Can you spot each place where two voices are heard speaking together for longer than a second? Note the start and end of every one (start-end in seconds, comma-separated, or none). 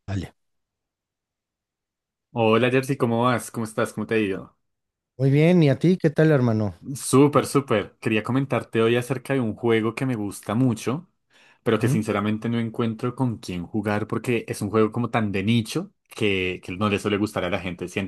none